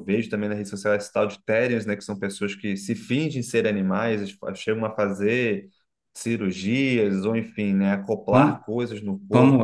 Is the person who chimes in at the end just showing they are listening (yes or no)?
no